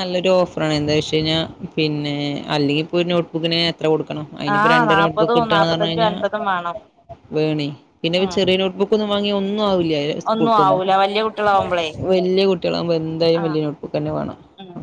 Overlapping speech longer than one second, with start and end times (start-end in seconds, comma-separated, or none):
4.5-6.1